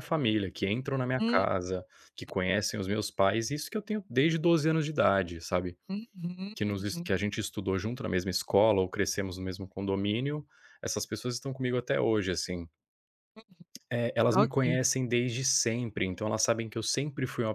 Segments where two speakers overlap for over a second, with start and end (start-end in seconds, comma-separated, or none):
none